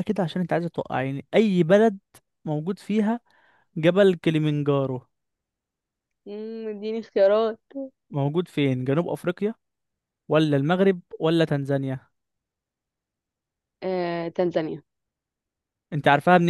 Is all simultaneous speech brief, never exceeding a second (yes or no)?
yes